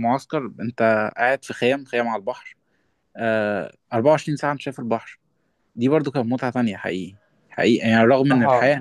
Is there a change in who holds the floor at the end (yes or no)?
no